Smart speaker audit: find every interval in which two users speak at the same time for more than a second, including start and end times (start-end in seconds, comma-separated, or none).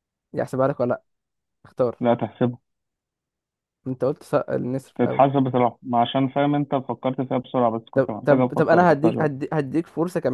7.9-9.3